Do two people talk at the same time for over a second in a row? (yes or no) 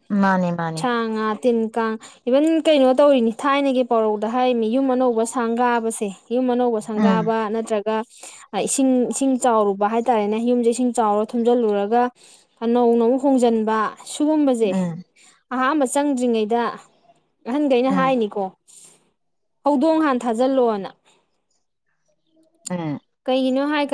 no